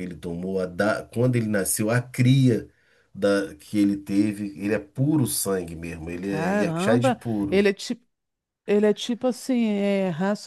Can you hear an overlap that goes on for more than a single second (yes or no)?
yes